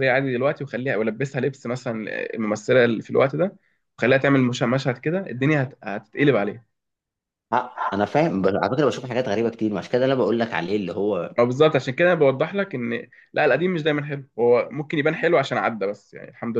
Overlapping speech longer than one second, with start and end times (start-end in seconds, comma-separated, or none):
none